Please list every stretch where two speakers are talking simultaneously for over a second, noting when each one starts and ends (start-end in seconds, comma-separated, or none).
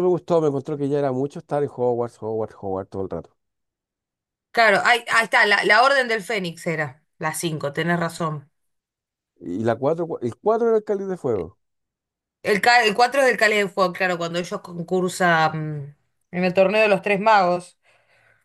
none